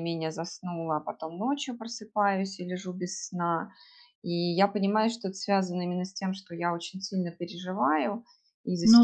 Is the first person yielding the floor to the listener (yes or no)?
no